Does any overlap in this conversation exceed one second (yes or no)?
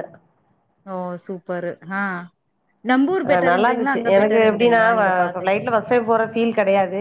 yes